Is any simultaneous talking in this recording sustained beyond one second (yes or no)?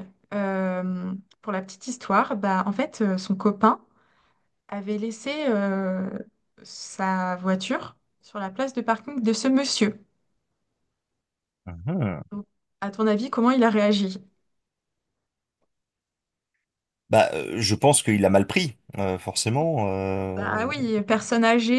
no